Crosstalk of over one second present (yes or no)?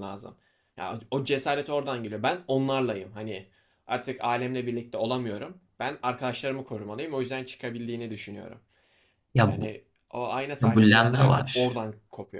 yes